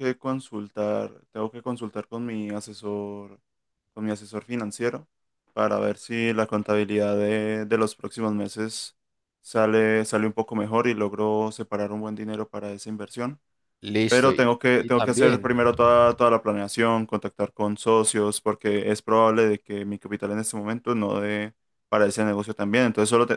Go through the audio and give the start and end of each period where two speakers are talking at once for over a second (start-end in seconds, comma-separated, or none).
14.1-15.5